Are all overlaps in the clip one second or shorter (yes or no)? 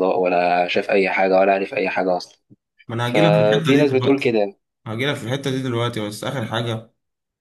no